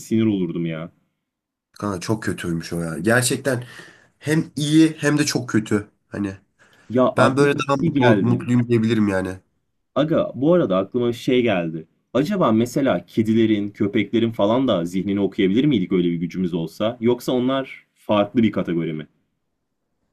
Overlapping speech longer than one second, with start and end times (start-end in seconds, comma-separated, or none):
7.2-8.4